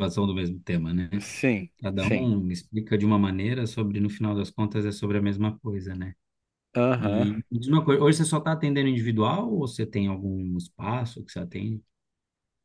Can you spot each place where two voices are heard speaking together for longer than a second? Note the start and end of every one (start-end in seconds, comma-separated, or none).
none